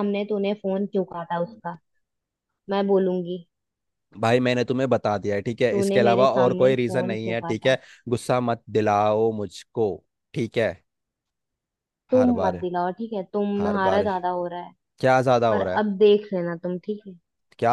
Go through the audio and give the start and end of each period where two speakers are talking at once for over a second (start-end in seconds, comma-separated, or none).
5.7-7.8